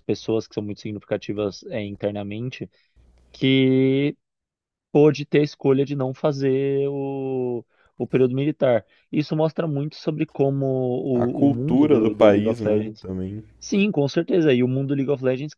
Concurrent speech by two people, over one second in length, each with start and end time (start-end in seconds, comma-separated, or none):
11.1-13.1